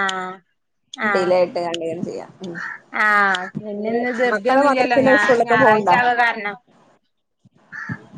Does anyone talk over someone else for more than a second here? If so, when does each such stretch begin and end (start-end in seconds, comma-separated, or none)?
3.8-5.9